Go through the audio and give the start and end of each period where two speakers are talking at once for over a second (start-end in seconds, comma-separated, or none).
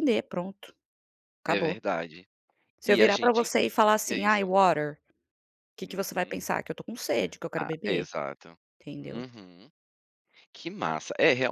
2.8-4.5